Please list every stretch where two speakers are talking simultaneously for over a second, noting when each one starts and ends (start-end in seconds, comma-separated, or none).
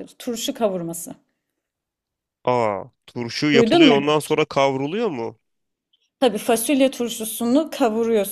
none